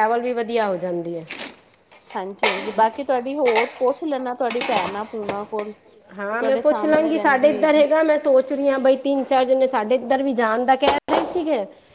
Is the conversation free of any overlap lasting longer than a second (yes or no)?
no